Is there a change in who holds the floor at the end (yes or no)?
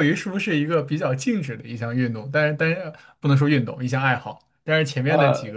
no